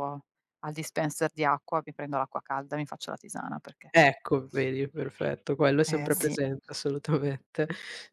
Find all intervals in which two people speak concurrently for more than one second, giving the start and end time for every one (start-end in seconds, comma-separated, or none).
none